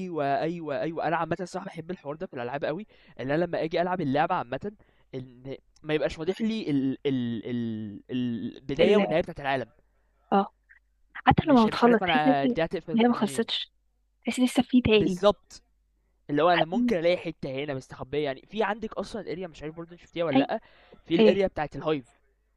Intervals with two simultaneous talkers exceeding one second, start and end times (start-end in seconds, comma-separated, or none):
11.4-13.5